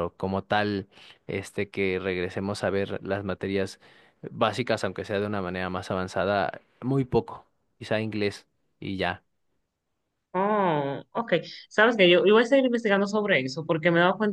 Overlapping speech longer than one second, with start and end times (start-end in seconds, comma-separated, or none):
none